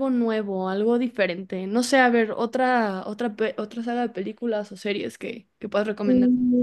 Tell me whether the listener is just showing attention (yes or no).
no